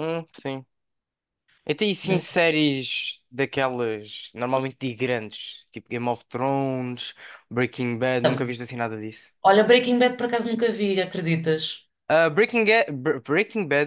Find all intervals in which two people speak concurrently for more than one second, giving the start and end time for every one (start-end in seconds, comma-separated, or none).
none